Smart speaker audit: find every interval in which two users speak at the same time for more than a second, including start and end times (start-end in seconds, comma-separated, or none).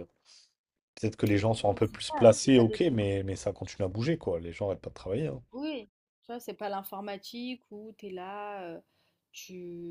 1.6-3.1